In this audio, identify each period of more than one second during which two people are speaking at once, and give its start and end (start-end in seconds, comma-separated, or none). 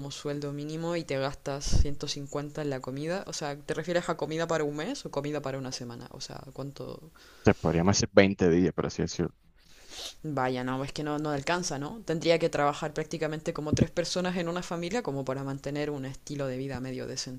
none